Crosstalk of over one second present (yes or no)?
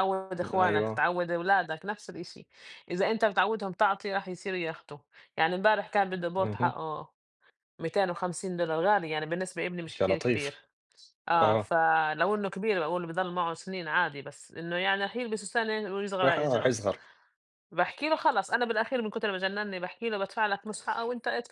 no